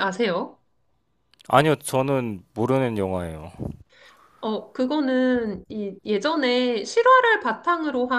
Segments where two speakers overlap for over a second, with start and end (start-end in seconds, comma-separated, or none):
none